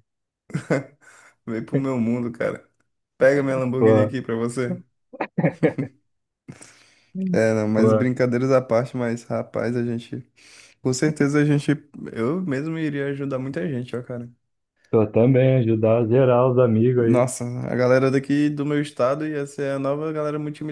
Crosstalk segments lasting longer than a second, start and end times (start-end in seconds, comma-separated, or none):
none